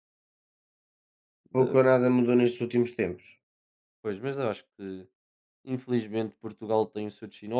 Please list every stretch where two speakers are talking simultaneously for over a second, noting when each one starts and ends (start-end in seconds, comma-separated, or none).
none